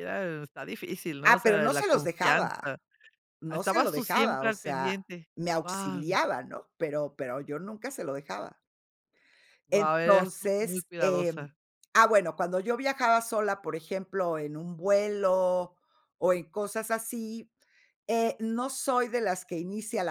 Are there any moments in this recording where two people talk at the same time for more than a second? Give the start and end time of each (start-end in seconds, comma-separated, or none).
1.2-2.7, 3.5-5.0, 9.7-11.5